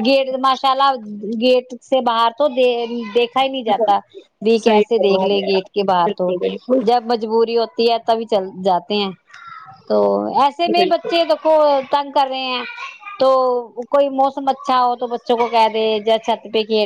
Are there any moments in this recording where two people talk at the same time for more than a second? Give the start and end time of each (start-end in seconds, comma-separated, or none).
4.6-6.3